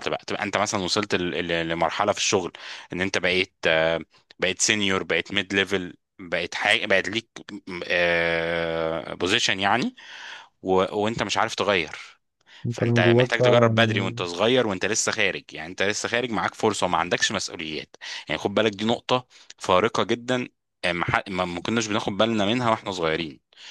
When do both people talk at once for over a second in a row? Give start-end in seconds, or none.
12.7-14.2